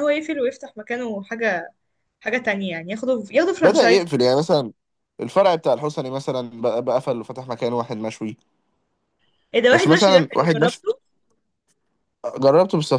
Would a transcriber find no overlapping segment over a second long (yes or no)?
no